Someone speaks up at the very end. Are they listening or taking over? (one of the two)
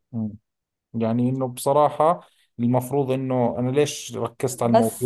listening